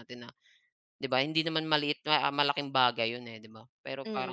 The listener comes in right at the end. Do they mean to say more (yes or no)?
yes